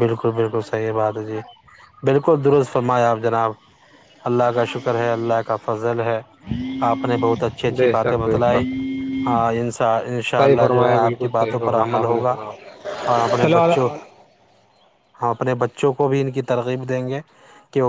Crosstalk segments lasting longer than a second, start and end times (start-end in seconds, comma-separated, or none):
10.4-12.3